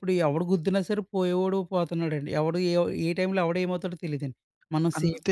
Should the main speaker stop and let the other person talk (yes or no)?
yes